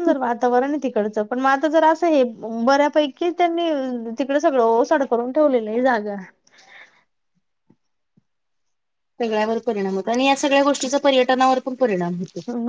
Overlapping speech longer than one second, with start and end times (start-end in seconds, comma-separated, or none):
none